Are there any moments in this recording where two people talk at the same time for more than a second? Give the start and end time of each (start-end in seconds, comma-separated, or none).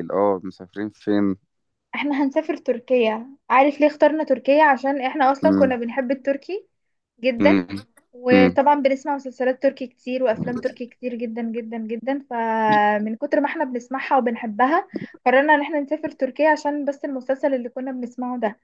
none